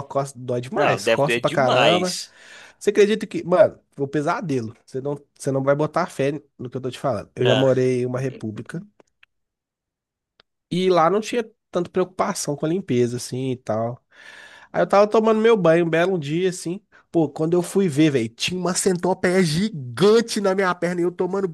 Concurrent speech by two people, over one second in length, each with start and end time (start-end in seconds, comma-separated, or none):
0.8-2.2